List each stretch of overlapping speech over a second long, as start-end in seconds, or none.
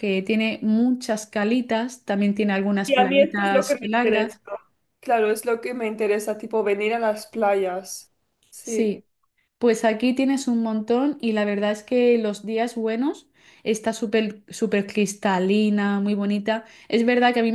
2.9-4.4